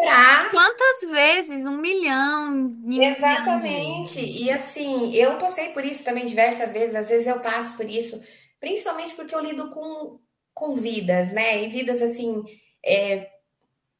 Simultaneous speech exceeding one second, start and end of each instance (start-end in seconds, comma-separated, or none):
2.9-4.3